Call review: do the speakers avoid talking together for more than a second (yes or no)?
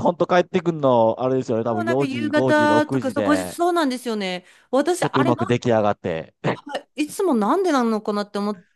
no